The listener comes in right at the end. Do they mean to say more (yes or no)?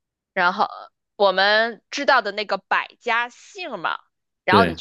no